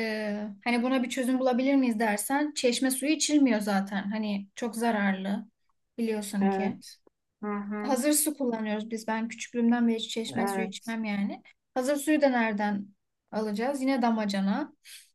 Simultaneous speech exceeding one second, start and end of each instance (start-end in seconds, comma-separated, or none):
none